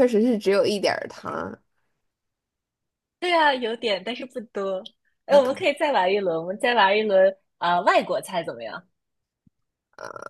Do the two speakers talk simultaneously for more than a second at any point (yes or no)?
no